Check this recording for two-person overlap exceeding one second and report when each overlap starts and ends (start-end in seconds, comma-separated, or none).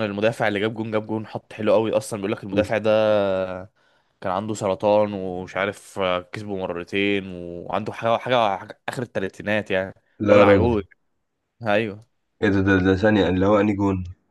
none